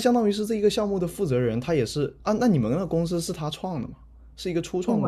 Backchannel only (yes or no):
no